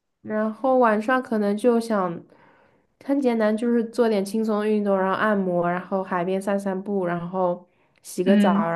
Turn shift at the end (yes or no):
no